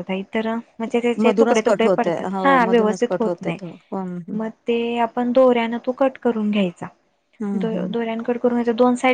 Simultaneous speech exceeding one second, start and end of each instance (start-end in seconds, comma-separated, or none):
1.2-3.6